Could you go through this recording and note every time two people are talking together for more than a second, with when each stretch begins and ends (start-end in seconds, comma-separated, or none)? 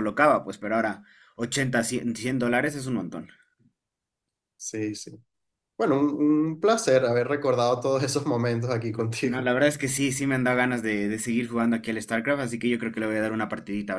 none